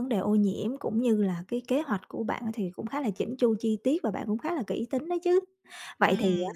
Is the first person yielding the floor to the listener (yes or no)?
no